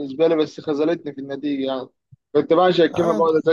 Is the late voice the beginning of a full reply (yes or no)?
no